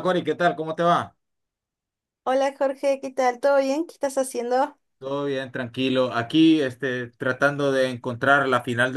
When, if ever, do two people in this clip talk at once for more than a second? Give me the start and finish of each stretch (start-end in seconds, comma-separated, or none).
none